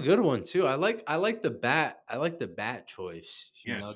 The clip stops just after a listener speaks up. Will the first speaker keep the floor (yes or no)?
no